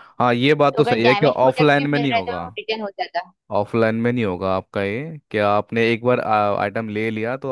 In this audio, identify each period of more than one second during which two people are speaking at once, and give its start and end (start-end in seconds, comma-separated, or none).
0.7-2.5